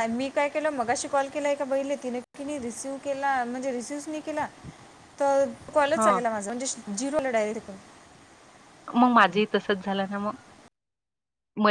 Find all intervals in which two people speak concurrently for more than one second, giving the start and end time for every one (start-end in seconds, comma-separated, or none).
none